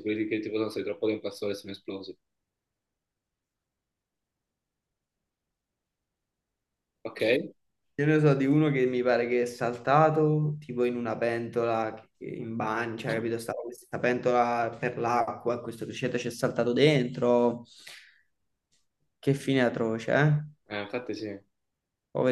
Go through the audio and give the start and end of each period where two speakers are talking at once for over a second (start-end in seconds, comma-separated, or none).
none